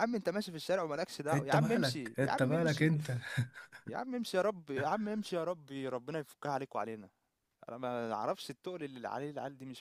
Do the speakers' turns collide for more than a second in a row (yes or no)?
yes